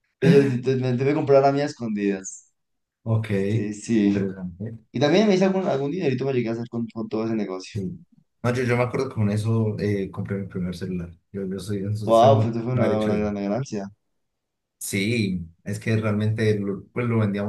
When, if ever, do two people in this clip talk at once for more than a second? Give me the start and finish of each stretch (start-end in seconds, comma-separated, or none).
12.0-13.3